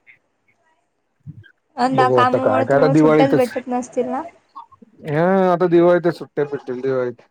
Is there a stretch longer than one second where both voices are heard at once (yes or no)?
yes